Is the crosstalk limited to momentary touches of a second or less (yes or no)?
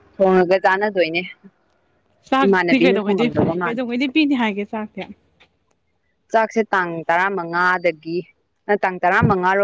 no